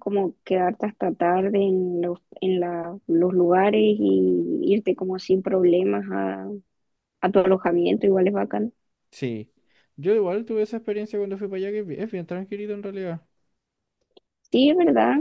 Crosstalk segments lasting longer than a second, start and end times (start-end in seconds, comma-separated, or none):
none